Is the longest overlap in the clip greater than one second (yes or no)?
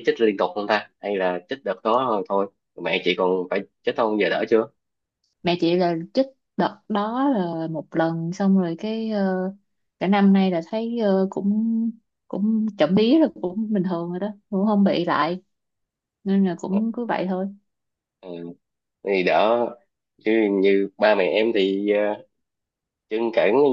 no